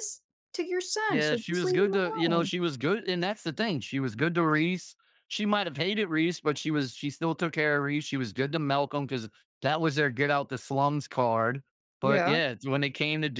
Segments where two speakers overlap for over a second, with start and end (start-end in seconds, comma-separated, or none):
1.1-2.5